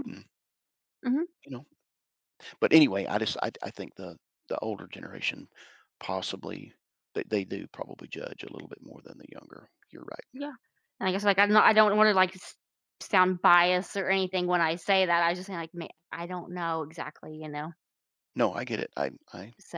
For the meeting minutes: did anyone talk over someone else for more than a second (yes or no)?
no